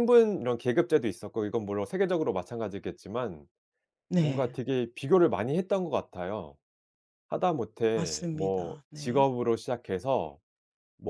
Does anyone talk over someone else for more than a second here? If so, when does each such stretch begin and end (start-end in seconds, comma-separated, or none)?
8.0-9.2